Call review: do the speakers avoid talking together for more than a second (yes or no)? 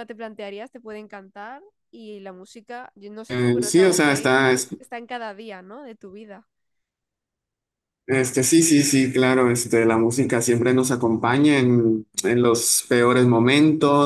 no